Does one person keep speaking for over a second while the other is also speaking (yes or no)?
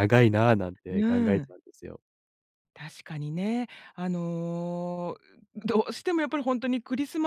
no